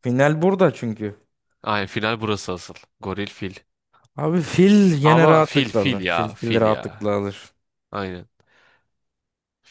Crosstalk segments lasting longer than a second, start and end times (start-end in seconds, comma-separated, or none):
5.0-6.8